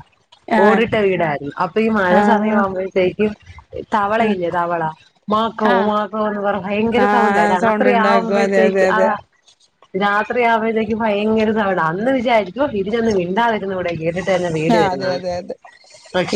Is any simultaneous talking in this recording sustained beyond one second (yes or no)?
yes